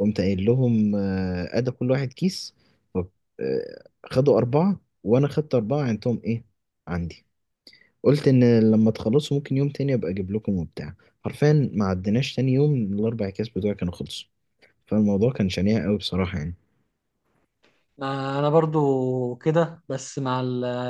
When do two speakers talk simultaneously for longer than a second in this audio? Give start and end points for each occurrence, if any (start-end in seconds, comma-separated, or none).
none